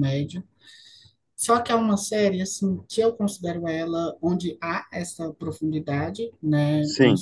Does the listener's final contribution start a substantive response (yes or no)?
no